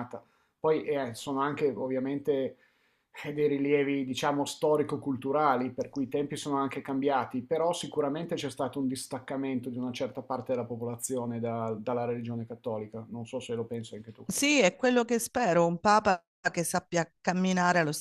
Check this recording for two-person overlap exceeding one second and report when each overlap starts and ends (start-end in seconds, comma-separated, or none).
none